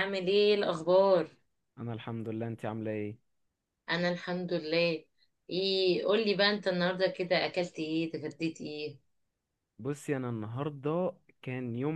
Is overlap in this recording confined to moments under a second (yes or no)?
yes